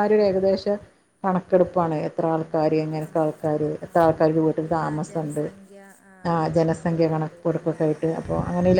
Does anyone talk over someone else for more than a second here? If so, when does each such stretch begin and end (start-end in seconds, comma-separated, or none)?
3.0-5.4, 6.4-7.8